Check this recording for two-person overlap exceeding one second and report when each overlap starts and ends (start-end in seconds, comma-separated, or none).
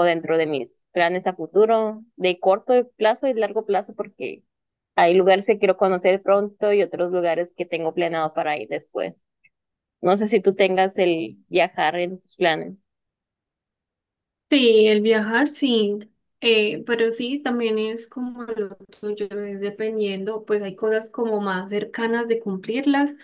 none